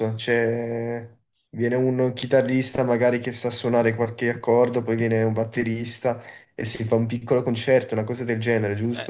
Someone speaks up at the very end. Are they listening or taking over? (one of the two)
taking over